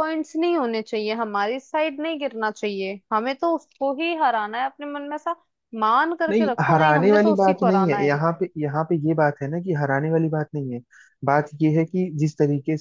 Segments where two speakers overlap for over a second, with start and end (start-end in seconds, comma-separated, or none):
6.3-8.2